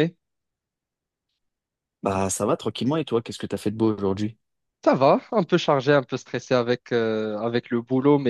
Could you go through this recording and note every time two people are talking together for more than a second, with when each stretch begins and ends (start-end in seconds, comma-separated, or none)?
none